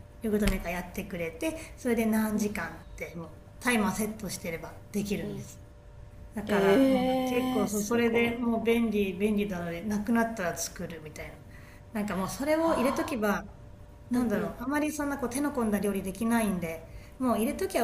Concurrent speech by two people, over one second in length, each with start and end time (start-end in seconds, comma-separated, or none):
6.5-8.3